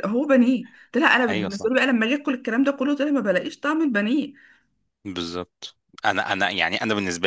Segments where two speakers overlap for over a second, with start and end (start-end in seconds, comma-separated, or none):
none